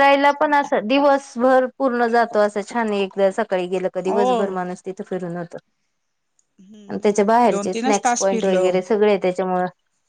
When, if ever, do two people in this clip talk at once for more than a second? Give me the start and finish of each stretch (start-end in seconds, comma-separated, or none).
6.9-8.7